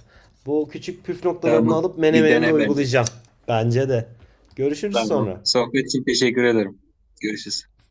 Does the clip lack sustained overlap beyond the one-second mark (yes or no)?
no